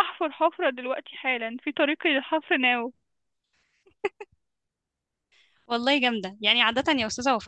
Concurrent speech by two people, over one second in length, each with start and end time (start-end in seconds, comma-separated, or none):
none